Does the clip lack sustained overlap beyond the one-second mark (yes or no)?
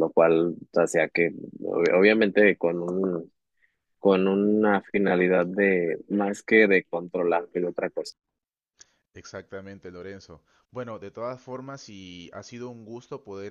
yes